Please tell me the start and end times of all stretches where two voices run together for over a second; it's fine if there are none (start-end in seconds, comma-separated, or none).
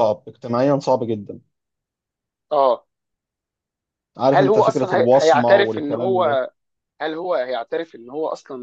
4.3-6.4